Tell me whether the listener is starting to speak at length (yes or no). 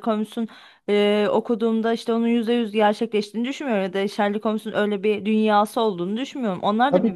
yes